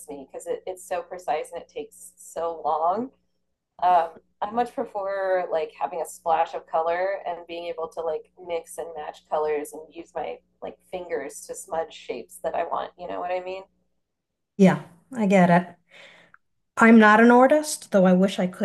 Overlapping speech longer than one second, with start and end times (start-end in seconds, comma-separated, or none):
none